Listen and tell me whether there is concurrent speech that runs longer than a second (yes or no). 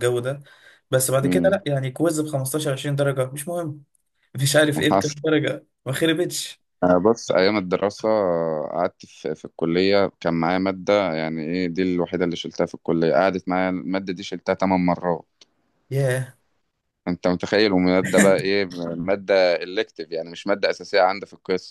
no